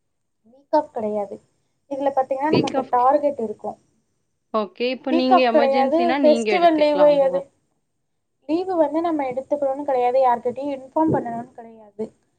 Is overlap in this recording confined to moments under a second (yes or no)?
no